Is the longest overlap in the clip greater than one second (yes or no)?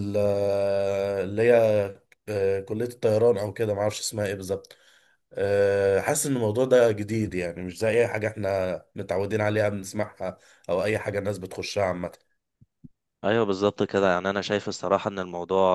no